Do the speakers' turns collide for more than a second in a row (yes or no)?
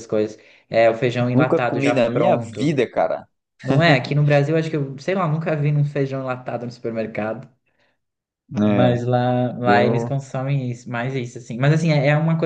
yes